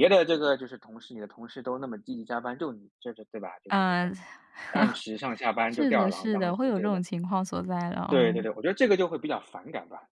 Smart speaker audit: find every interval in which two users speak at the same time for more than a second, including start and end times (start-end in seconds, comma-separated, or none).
5.7-7.0